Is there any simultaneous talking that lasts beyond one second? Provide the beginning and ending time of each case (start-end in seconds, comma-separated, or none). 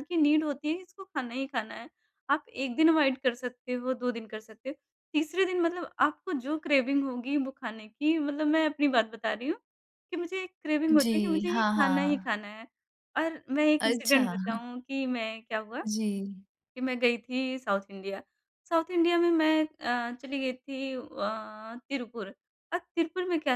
10.9-12.4